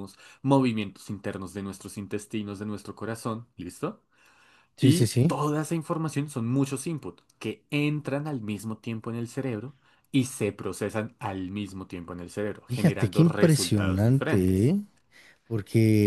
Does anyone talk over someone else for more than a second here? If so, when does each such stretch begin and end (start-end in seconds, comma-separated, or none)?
12.7-14.7